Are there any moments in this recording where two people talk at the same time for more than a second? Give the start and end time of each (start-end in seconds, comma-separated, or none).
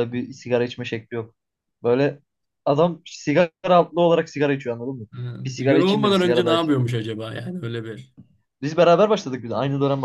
5.4-6.8